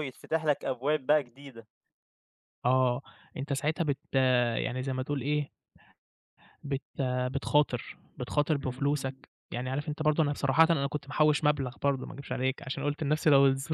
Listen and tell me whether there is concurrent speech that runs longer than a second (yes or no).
no